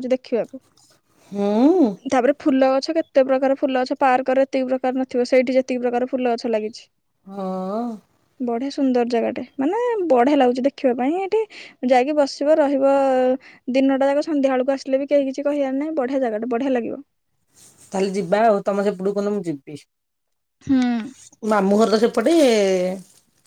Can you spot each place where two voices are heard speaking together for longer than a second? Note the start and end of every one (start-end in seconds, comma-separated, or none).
none